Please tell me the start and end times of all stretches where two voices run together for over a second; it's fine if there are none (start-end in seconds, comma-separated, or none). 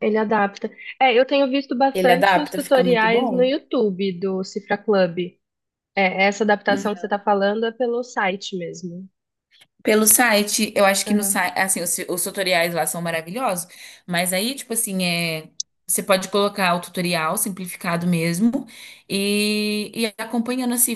1.9-3.5